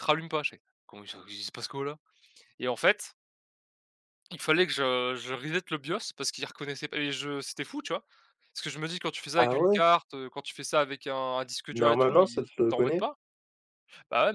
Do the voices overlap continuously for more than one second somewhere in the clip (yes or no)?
yes